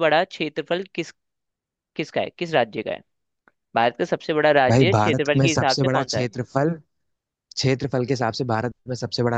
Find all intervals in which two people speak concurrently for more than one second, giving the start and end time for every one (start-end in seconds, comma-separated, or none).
4.7-6.3